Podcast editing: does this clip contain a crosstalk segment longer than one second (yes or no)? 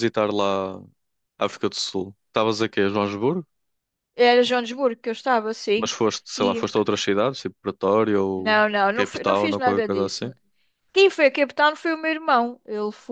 yes